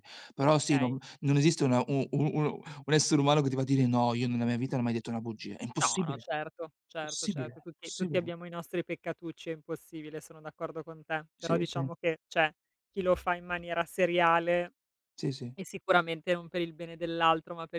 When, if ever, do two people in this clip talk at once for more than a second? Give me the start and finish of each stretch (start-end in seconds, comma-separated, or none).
7.0-8.3